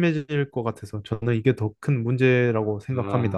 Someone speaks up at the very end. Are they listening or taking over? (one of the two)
taking over